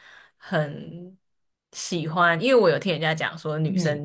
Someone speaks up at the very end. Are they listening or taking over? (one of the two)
listening